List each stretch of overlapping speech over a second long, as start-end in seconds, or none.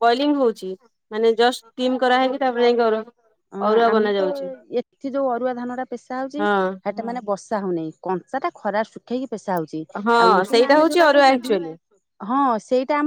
10.2-11.7